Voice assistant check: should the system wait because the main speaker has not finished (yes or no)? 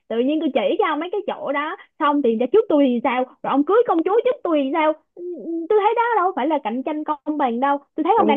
no